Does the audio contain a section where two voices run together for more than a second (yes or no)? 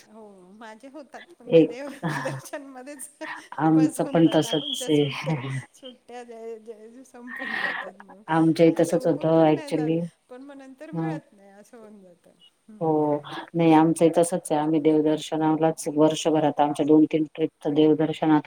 yes